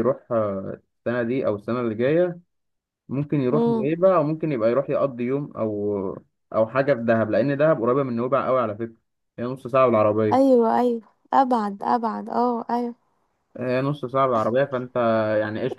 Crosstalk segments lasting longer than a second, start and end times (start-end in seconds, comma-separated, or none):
none